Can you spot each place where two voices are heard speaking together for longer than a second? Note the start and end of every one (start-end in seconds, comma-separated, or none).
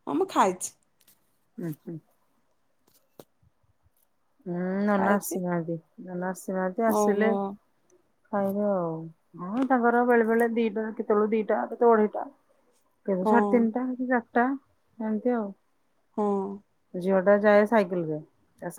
none